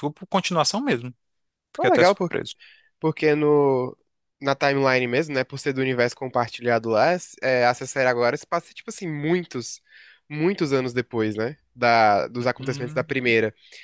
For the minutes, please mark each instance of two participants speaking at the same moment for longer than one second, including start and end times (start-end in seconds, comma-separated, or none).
none